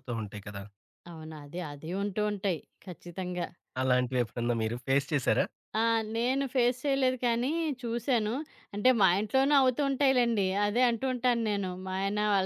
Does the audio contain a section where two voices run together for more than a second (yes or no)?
no